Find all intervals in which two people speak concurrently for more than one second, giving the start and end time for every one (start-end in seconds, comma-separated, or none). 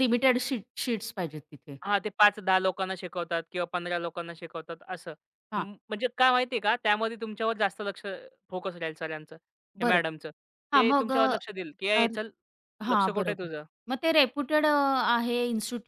none